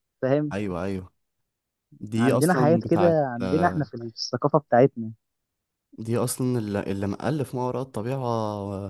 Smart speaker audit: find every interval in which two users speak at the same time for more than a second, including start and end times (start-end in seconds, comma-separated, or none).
2.1-3.9